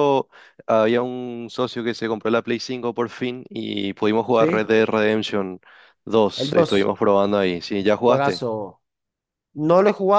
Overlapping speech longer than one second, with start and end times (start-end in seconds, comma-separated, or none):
none